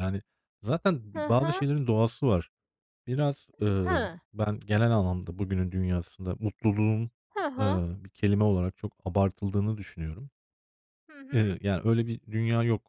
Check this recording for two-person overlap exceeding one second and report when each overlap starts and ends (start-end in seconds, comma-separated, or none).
none